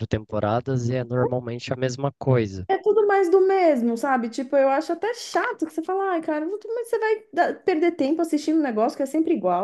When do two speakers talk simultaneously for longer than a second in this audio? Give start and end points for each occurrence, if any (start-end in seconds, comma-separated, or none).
none